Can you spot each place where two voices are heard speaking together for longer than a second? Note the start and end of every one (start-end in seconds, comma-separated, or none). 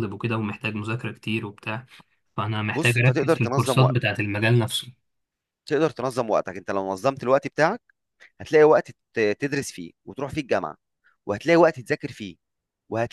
2.7-4.1